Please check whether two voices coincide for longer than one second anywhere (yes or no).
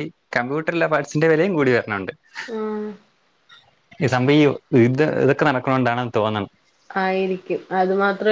no